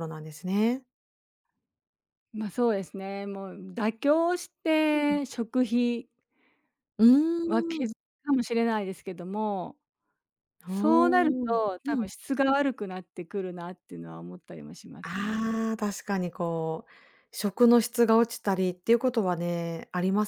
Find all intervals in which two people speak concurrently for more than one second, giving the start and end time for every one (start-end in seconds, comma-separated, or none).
10.7-12.1